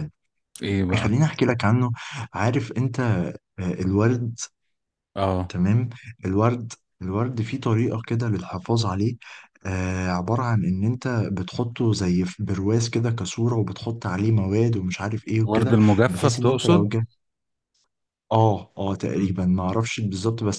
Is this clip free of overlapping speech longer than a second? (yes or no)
no